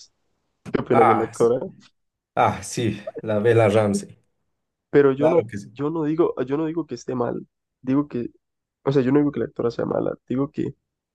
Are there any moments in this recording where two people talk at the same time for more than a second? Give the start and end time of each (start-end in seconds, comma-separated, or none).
none